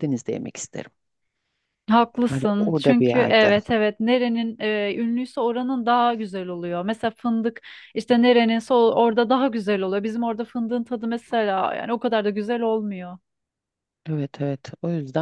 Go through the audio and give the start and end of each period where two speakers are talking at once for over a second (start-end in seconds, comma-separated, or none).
2.2-3.5